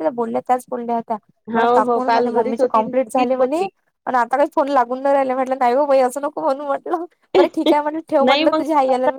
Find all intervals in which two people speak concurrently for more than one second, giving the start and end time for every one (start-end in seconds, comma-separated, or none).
1.6-3.6